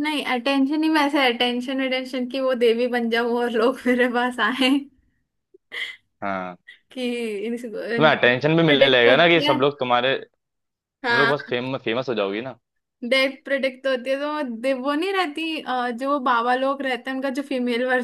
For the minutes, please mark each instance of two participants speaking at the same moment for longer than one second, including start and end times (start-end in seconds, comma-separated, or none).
8.0-9.6